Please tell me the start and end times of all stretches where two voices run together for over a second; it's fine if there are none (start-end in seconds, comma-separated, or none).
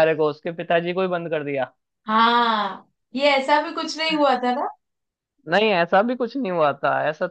none